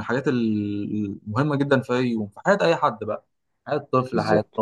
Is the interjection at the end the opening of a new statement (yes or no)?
no